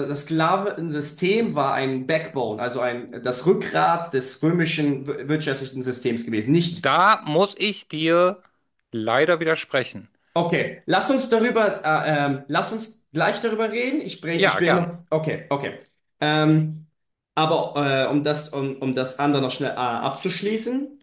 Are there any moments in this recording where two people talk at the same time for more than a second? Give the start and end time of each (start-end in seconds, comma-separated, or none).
none